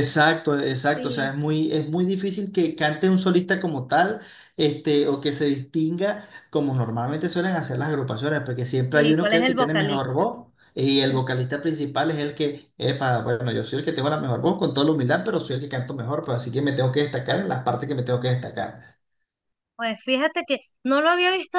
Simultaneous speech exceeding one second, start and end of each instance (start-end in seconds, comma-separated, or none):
8.9-10.3